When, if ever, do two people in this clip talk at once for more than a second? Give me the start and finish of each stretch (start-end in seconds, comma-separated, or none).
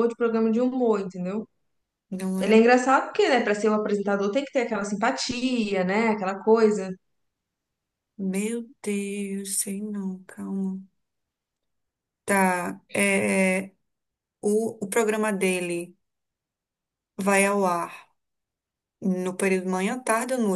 none